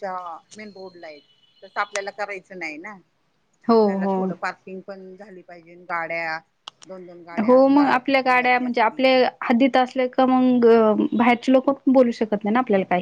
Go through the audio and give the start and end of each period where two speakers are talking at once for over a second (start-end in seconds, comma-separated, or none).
7.5-9.2